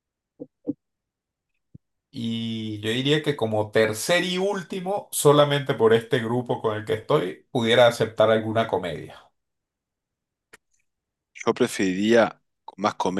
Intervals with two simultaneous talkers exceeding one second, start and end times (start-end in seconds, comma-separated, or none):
none